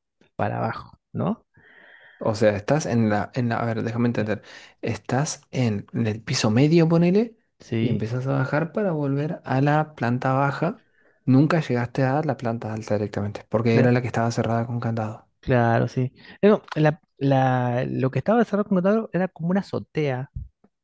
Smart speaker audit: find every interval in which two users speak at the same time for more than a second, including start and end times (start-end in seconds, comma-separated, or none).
none